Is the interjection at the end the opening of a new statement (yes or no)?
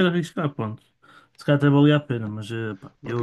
yes